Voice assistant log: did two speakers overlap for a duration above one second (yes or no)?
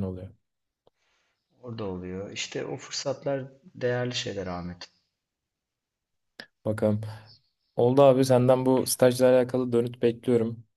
no